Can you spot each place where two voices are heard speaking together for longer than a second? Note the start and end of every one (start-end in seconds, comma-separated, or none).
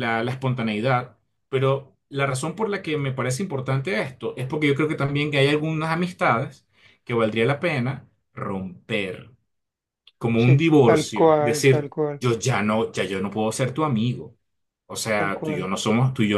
10.4-12.2